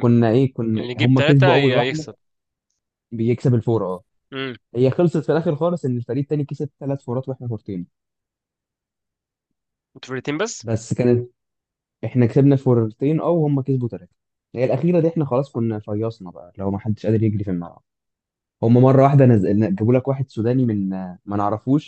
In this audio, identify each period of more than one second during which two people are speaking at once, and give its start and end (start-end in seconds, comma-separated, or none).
0.7-2.1